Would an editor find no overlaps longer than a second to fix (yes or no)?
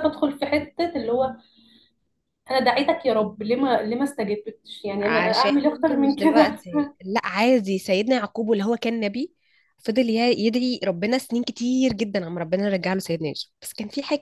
no